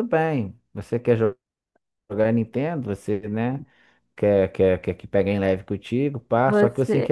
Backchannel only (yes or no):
yes